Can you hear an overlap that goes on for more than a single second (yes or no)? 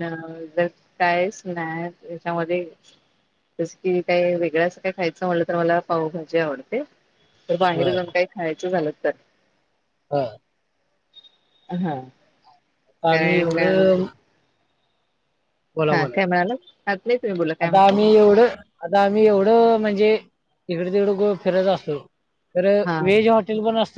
no